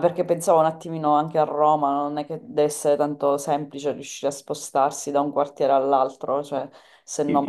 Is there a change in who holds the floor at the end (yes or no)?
yes